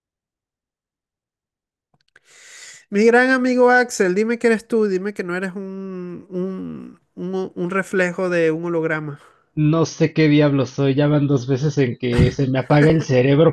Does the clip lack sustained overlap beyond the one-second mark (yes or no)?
yes